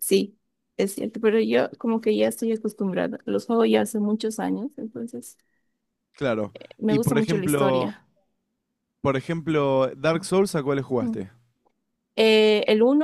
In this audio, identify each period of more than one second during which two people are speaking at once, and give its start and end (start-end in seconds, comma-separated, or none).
6.5-7.9